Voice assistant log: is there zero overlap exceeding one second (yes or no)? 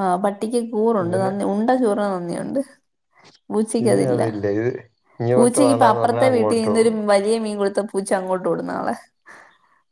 no